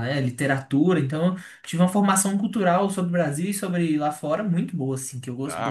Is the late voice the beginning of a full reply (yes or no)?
yes